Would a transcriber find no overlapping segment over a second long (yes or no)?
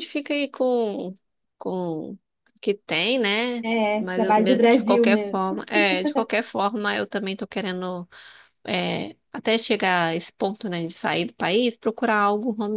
no